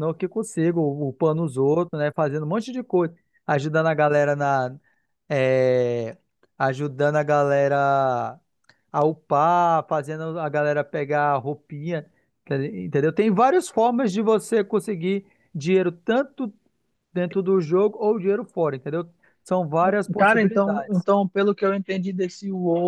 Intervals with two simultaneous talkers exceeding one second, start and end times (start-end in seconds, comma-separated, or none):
19.8-21.1